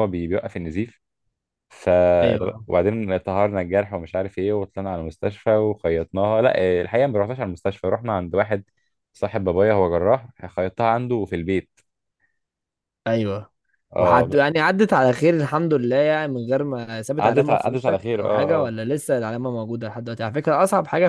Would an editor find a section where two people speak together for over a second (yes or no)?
yes